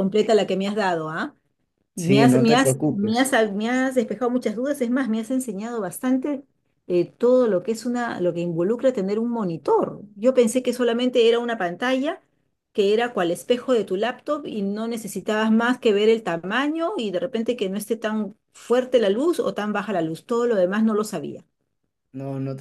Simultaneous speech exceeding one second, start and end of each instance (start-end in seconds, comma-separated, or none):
1.9-3.3